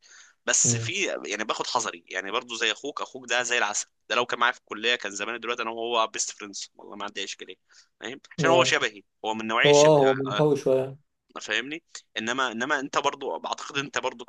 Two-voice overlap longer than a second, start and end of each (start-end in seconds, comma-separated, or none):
none